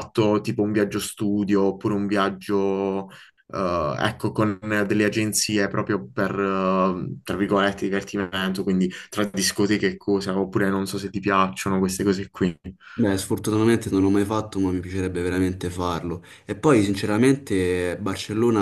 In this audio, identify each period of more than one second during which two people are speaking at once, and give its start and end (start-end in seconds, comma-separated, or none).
none